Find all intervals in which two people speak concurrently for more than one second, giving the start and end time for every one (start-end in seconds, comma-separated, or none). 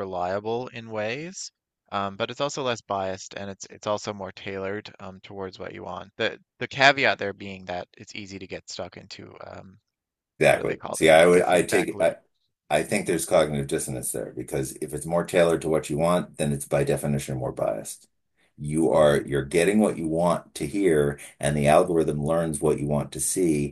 10.5-12.2